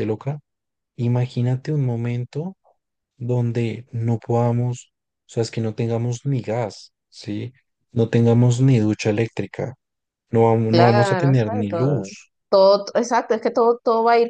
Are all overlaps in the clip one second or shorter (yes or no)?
no